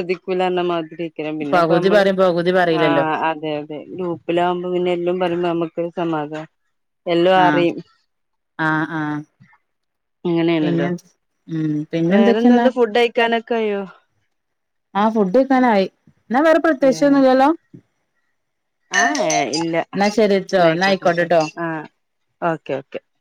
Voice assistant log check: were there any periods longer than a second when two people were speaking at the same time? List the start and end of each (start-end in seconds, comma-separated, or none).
none